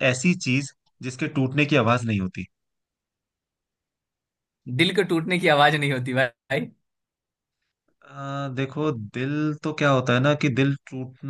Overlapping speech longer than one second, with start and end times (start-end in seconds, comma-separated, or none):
none